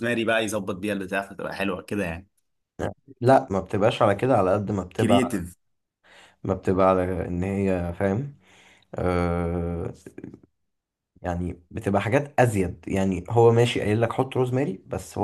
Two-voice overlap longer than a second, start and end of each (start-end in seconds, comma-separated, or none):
none